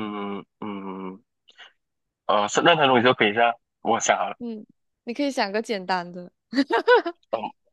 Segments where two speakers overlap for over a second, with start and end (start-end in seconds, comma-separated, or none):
none